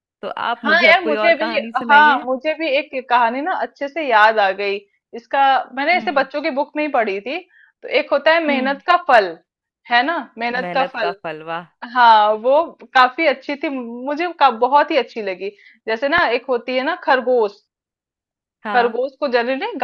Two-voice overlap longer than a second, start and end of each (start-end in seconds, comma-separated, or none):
0.6-2.3